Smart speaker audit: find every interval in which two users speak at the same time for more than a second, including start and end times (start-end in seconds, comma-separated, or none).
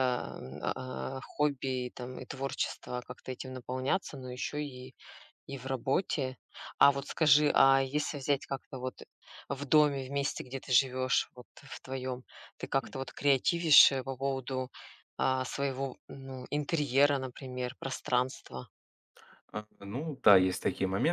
none